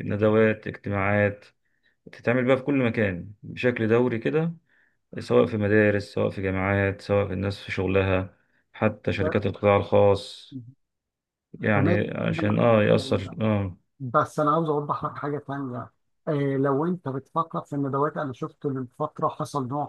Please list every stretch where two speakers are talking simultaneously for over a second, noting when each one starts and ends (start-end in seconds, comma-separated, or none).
11.7-13.4